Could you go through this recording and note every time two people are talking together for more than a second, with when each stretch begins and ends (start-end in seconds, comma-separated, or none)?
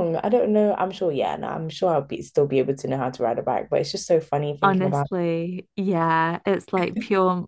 none